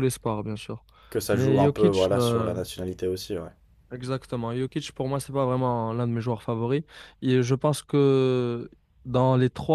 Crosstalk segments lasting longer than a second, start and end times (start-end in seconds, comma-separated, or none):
1.3-2.6